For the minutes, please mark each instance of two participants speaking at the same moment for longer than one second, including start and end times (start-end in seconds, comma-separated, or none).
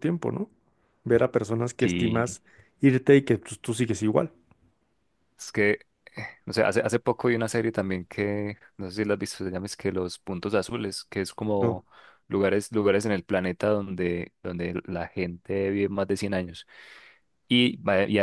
none